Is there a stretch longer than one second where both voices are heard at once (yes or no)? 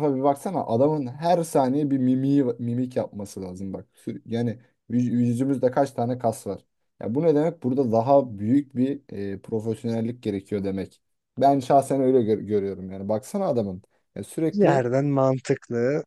no